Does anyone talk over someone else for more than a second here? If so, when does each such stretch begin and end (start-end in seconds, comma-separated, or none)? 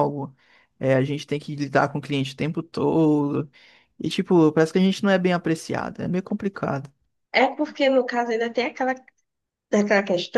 none